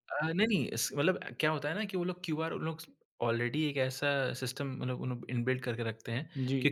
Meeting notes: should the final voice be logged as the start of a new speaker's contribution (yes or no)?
no